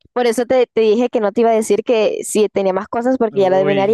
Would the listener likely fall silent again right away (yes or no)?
no